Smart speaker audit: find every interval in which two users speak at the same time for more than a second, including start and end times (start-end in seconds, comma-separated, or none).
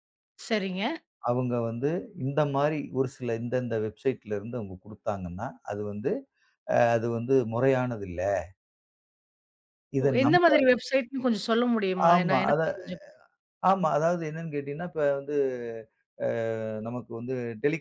none